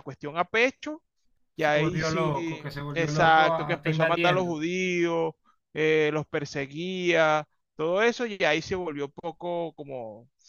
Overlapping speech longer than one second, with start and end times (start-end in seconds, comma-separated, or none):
1.6-4.6